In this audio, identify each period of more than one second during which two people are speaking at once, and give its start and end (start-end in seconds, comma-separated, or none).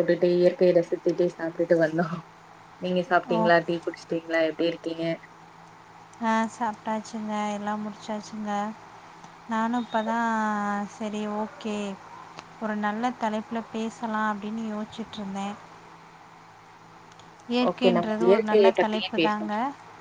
17.7-19.5